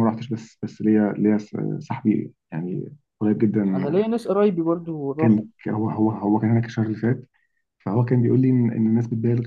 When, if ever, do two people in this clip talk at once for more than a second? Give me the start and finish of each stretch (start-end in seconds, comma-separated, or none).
none